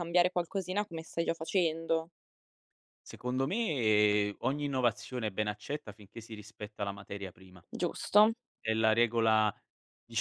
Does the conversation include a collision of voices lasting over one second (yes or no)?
no